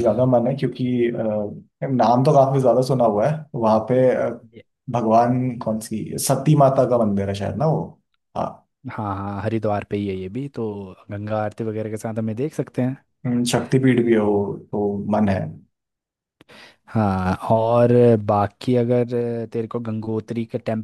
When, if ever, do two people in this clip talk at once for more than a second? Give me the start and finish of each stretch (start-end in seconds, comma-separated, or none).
none